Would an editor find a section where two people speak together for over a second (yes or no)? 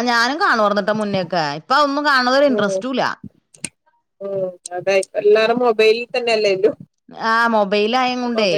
no